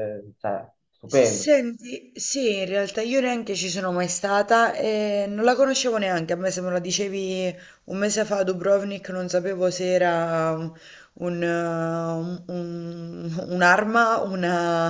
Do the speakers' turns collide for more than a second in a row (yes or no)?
no